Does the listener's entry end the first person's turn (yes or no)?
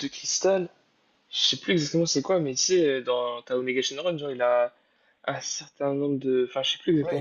yes